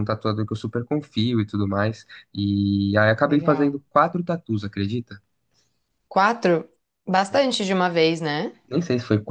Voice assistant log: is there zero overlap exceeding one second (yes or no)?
yes